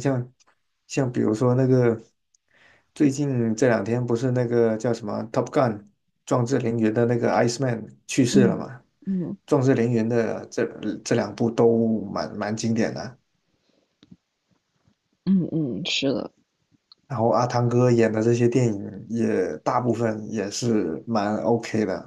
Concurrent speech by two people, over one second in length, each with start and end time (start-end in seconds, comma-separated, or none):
none